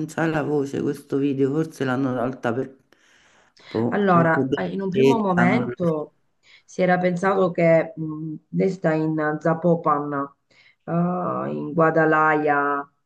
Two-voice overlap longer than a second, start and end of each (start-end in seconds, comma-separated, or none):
3.9-5.9